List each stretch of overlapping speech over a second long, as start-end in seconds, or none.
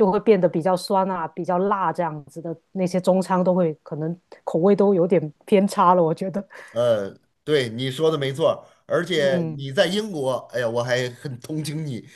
none